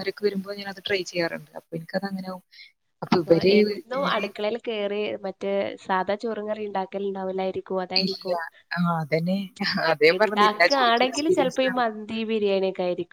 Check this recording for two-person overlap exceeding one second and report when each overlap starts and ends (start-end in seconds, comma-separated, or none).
10.2-11.6